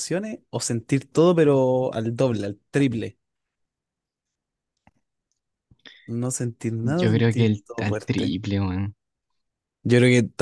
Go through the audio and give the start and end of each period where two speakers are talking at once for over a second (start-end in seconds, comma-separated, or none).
7.0-8.3